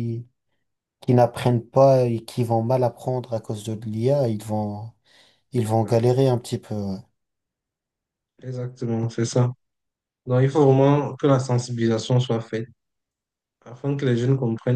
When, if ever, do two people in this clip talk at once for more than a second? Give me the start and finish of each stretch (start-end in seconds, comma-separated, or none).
none